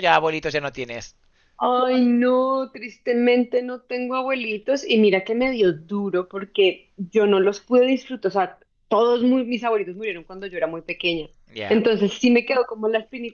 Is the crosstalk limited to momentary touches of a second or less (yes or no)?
yes